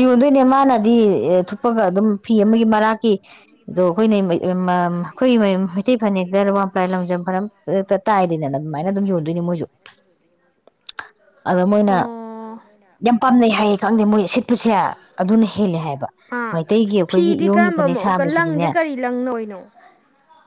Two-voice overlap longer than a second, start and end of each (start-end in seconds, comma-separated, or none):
17.1-18.7